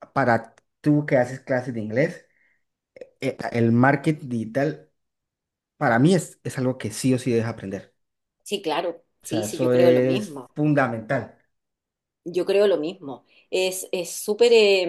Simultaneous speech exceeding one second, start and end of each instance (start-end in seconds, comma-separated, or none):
9.2-10.5